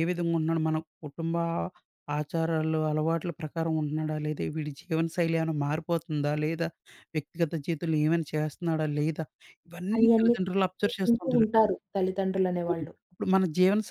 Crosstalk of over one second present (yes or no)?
yes